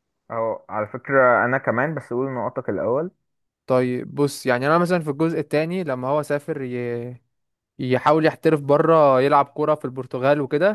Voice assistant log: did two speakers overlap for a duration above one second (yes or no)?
no